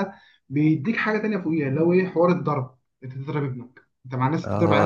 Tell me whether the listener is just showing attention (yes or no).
no